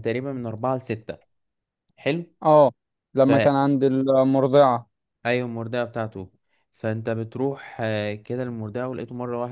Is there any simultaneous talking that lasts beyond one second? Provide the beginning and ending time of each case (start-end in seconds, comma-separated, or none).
none